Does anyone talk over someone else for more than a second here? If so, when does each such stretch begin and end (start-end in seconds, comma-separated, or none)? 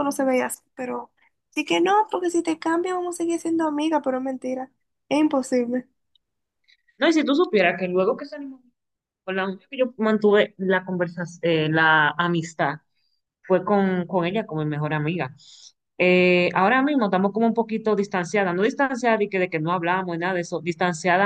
none